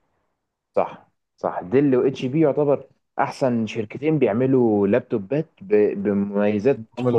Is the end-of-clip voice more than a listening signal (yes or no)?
no